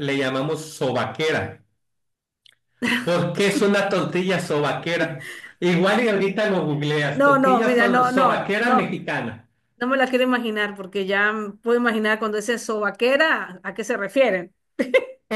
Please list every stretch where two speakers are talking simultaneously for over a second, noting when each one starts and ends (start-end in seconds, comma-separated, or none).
7.1-9.0